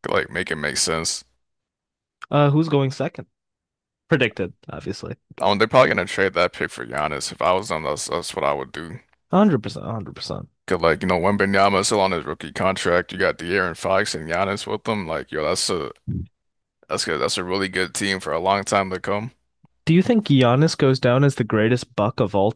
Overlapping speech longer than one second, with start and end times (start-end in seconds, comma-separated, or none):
none